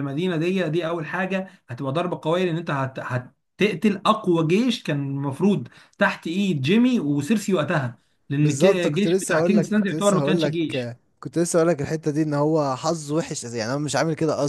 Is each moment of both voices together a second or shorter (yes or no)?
no